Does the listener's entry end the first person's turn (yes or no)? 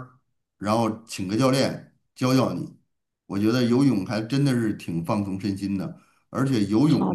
no